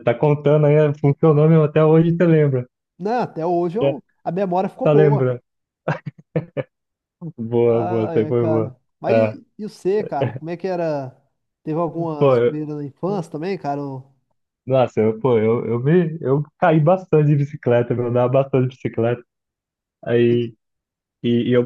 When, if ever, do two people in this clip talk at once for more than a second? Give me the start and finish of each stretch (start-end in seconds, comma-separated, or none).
7.7-9.4